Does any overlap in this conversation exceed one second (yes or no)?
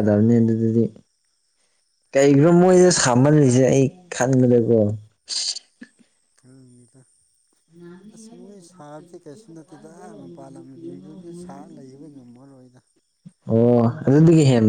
no